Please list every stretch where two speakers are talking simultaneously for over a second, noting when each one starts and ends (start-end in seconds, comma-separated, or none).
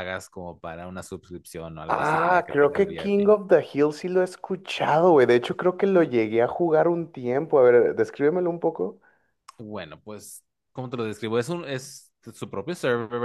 1.9-3.3